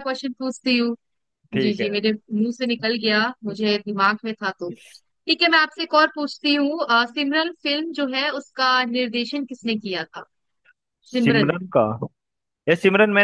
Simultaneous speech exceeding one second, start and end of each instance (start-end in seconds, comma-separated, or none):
none